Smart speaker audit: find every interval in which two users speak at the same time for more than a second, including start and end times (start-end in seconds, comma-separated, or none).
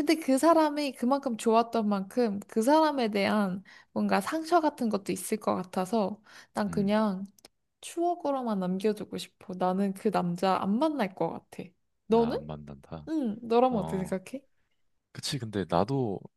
none